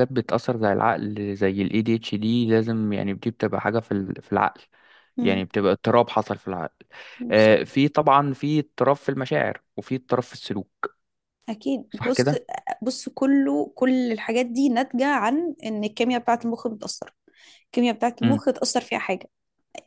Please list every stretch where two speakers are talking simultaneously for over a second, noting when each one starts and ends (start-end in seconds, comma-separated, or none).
none